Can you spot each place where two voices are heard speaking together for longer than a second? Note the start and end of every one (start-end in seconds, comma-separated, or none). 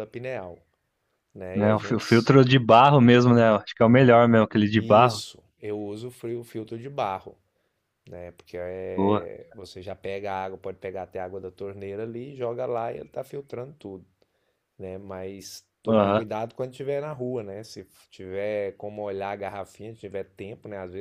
none